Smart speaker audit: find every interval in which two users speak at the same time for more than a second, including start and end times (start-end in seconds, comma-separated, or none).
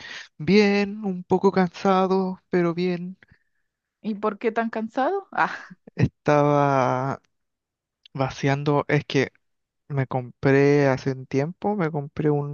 none